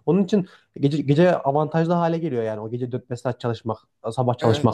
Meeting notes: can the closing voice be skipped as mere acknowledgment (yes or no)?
no